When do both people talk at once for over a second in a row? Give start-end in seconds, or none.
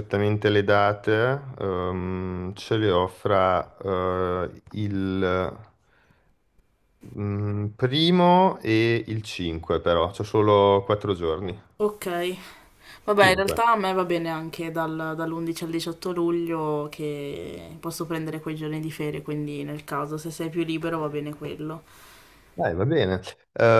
none